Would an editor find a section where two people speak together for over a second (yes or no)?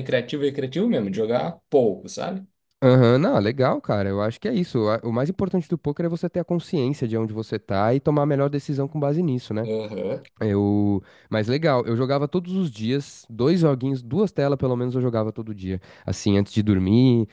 no